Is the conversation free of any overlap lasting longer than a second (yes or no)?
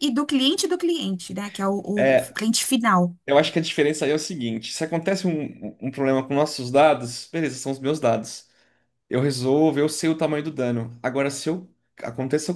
yes